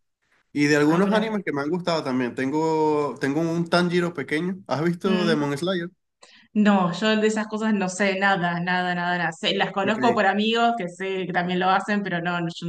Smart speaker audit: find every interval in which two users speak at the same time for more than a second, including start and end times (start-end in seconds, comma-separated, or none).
none